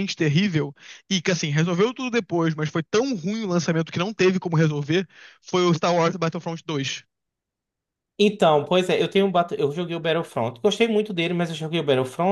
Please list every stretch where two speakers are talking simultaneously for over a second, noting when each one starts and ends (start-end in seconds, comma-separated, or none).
none